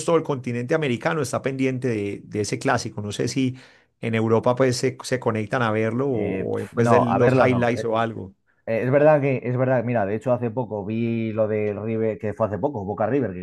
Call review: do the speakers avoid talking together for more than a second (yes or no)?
no